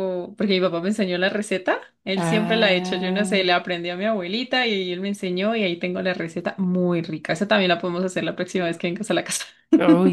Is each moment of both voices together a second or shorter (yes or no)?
no